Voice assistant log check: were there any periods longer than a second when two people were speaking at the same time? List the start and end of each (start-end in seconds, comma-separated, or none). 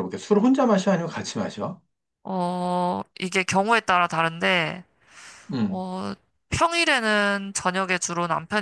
none